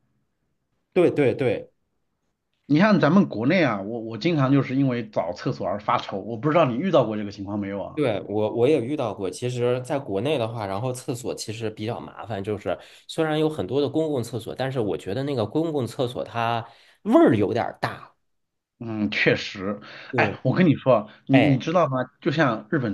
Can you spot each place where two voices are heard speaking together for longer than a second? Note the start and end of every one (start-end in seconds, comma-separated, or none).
none